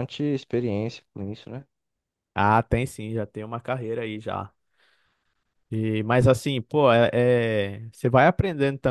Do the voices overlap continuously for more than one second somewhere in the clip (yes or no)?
no